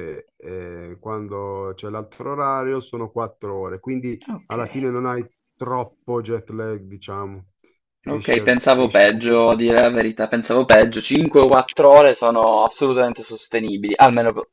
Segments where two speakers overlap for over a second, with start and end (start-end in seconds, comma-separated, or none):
8.1-9.6